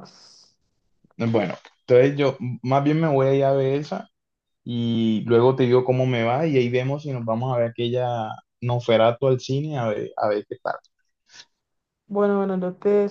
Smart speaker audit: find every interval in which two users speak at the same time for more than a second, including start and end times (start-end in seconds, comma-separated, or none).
none